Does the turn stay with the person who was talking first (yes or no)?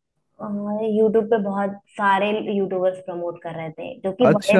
no